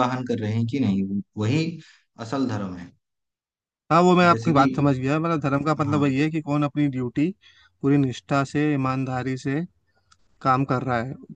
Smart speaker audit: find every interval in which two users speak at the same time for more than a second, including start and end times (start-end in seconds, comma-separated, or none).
none